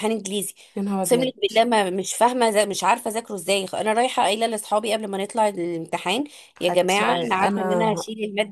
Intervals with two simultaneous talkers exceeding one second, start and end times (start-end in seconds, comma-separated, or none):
6.6-7.9